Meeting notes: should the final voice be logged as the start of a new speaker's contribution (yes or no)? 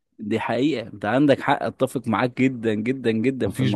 yes